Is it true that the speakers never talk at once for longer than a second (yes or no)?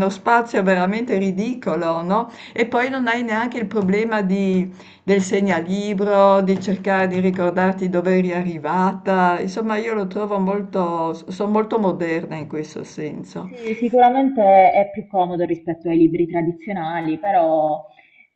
yes